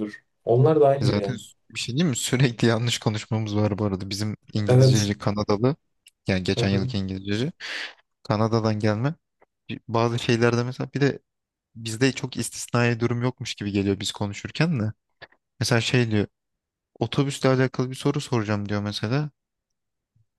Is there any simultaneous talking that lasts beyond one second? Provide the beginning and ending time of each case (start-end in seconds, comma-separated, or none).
none